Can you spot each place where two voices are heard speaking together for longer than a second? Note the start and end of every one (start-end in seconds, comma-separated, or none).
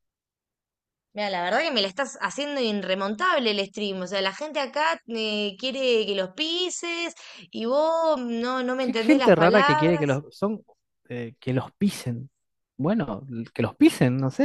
8.8-10.2